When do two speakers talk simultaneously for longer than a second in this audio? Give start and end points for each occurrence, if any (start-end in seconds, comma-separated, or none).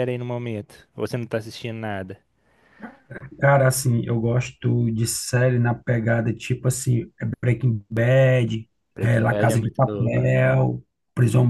8.9-10.2